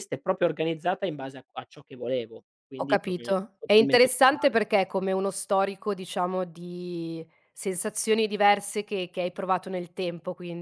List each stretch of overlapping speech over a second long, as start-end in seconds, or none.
2.8-4.6